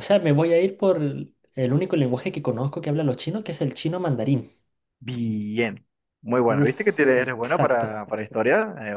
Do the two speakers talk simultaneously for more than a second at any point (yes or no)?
yes